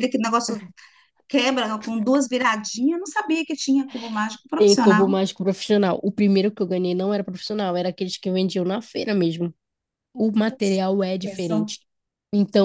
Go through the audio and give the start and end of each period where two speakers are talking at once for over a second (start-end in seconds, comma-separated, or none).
none